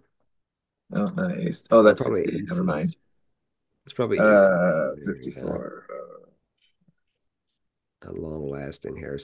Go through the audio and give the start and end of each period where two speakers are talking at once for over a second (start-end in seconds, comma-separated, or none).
1.4-2.9, 4.2-5.6